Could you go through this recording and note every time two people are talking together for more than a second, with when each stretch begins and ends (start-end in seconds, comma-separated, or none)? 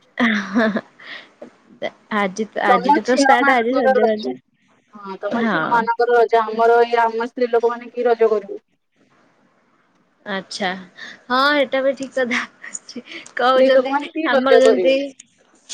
13.4-14.9